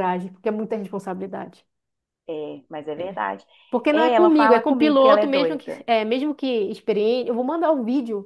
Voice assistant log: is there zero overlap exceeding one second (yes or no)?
no